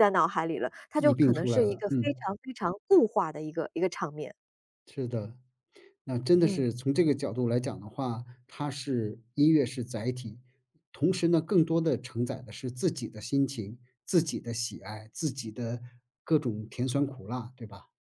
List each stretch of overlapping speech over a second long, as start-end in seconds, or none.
1.0-2.2